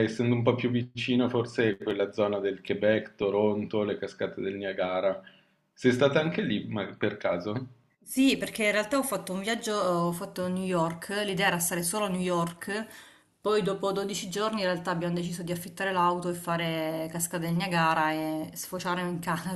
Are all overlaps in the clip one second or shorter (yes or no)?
yes